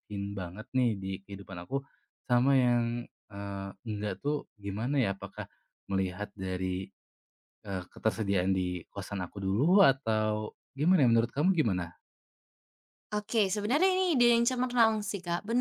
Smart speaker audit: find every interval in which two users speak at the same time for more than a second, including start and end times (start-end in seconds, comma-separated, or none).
none